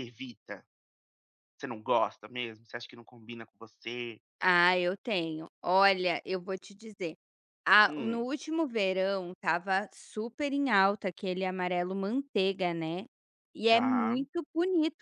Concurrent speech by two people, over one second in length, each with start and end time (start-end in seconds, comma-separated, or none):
none